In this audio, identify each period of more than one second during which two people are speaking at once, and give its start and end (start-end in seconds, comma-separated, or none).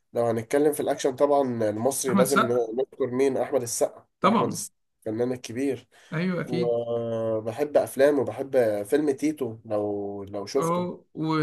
none